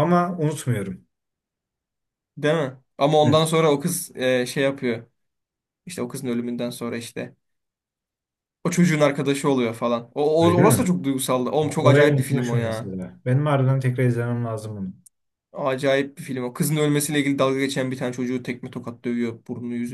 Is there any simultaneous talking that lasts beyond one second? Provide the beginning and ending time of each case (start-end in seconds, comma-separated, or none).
11.6-12.9